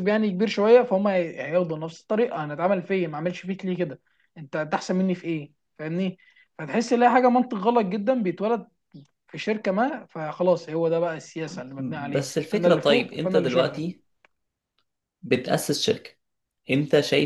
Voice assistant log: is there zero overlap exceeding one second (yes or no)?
no